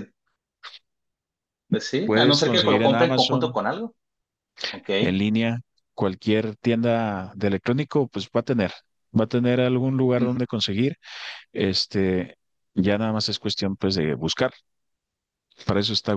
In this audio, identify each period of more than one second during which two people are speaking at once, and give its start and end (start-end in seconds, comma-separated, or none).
2.0-3.6